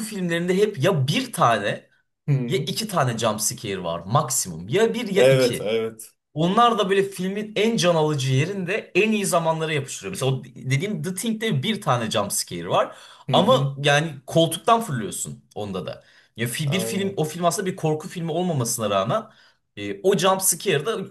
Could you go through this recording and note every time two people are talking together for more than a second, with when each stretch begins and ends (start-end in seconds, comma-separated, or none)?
none